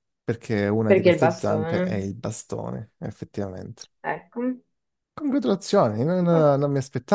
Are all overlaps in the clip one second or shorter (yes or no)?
no